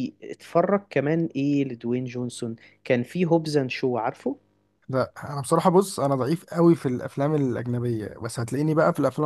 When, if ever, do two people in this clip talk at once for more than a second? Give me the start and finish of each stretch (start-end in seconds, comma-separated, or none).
none